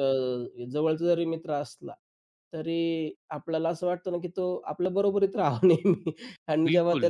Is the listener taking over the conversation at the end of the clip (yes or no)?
no